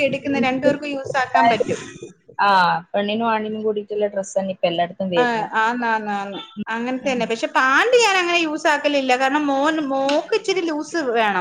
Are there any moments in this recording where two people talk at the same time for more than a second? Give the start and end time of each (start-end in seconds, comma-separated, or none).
none